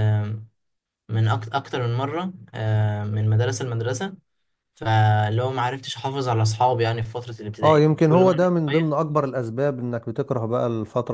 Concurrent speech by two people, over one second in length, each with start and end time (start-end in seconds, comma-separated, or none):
7.6-8.9